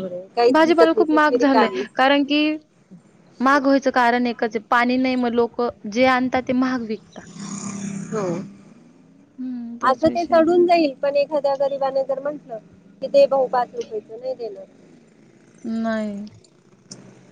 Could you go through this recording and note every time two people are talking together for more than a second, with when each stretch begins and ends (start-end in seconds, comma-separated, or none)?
0.5-2.1